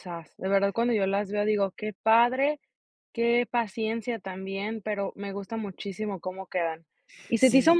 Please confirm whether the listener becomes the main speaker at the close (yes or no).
no